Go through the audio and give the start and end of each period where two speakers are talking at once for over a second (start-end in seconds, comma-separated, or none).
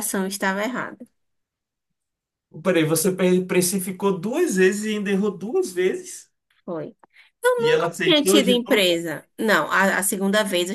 7.6-8.9